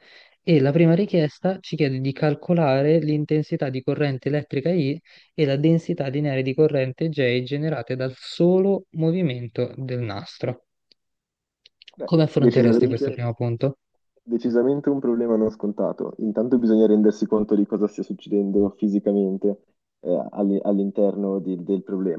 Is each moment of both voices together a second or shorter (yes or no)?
no